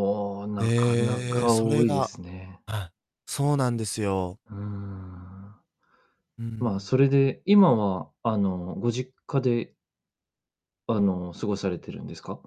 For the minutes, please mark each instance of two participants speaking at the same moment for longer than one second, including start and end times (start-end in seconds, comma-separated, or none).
0.6-2.1